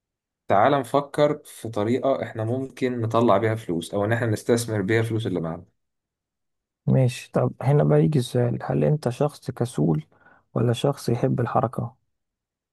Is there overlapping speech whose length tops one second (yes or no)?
no